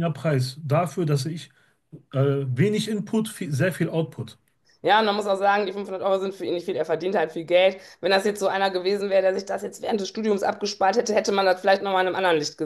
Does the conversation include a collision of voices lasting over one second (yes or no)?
no